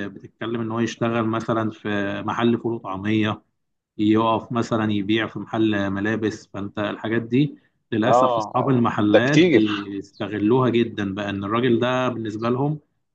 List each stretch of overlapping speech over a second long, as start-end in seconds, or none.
8.1-9.9